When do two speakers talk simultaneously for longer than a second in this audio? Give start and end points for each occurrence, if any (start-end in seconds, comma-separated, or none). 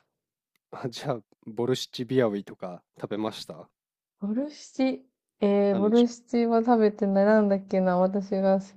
none